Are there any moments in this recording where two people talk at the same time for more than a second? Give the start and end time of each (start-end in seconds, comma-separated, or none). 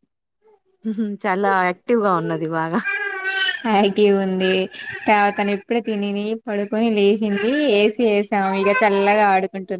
none